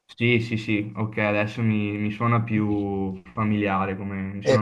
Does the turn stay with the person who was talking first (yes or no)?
no